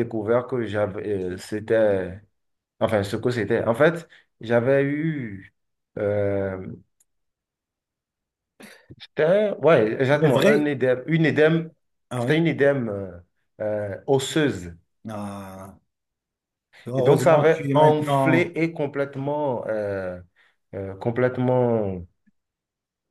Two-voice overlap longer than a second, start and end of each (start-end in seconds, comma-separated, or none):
16.9-18.5